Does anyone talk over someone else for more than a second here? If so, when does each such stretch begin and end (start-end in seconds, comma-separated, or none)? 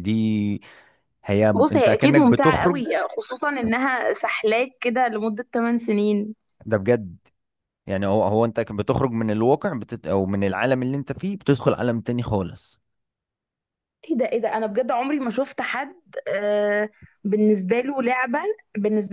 1.5-2.8